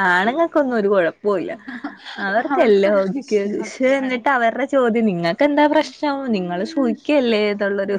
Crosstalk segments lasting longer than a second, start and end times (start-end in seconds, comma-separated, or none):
2.5-4.2